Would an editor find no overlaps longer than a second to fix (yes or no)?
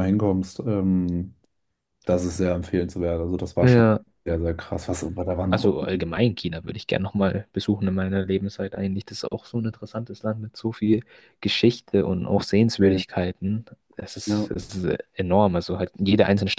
yes